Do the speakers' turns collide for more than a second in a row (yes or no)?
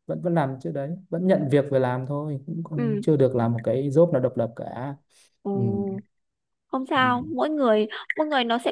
no